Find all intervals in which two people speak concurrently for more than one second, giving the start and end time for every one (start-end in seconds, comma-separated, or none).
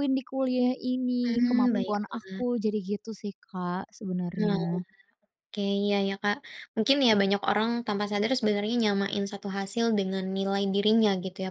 1.2-2.5